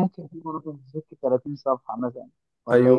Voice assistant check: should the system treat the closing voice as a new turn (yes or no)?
yes